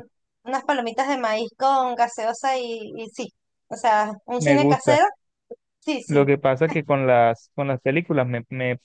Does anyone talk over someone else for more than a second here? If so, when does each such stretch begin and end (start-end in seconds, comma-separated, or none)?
none